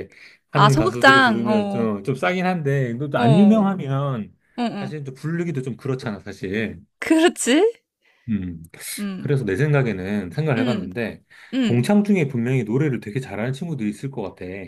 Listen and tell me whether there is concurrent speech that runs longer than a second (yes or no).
yes